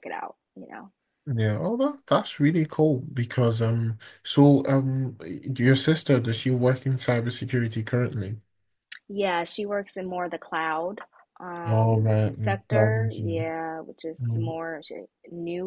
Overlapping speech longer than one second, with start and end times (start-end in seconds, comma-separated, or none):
11.7-13.5